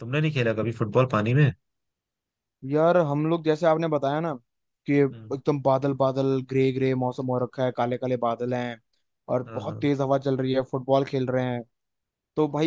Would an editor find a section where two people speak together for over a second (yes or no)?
no